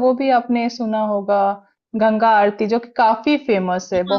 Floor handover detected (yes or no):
yes